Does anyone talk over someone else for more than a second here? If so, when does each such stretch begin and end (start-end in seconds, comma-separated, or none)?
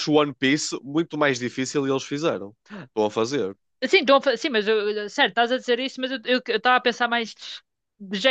none